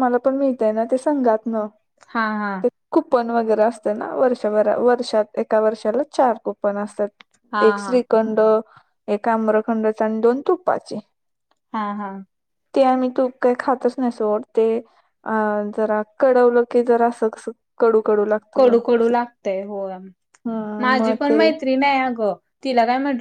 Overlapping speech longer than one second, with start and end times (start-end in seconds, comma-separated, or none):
none